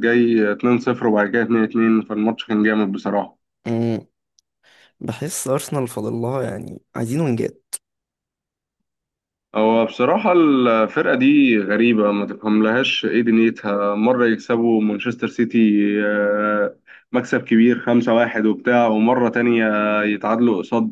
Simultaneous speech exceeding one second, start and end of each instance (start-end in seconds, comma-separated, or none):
none